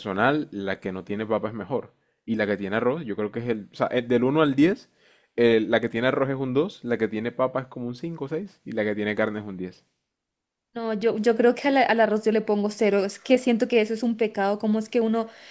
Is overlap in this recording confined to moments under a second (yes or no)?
yes